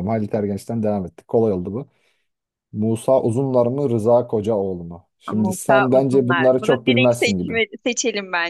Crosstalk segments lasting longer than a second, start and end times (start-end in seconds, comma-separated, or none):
5.3-7.6